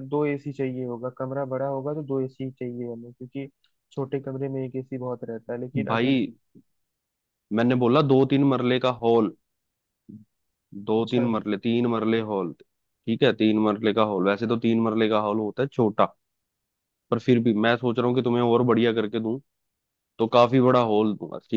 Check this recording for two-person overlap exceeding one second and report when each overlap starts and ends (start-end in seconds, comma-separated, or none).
none